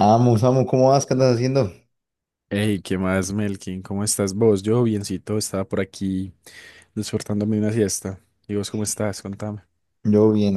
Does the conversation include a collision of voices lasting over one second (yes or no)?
no